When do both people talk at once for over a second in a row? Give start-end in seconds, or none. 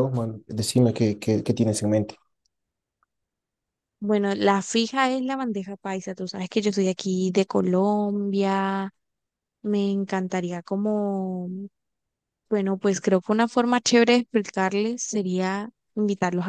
none